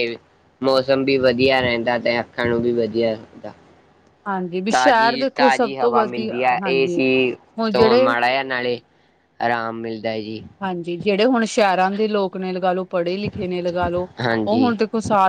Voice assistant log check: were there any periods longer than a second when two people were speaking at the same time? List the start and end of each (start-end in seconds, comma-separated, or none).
4.7-7.0